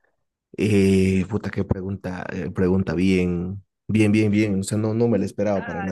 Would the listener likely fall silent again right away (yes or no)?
no